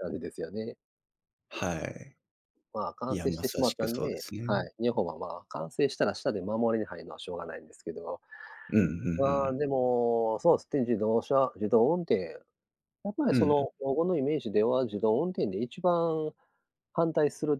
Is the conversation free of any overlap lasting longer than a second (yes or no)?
no